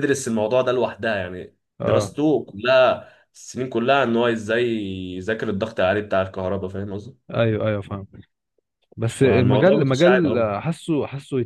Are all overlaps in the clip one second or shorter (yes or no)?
no